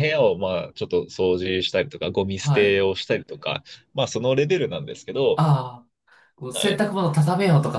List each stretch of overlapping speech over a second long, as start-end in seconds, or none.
none